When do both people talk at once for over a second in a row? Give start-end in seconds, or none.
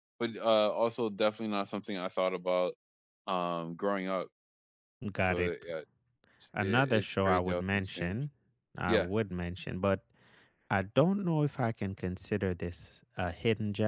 6.6-8.2